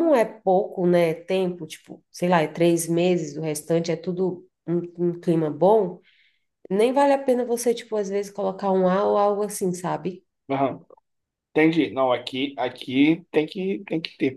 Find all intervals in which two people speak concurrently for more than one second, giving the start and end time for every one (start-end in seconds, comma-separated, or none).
none